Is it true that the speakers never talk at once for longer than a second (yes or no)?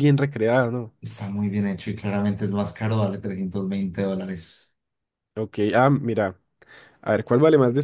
yes